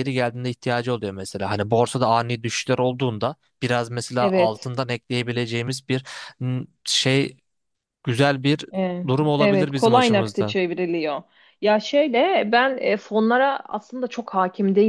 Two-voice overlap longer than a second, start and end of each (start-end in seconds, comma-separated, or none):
9.1-10.6